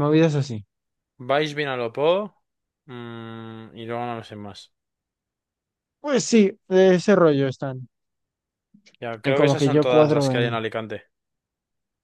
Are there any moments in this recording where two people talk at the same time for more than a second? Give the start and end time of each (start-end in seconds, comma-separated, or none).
9.2-10.6